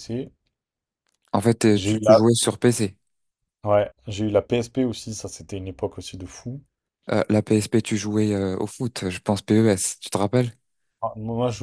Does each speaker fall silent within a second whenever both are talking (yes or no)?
yes